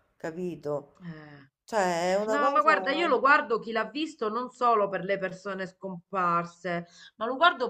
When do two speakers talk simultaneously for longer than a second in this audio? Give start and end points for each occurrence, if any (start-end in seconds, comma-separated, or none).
none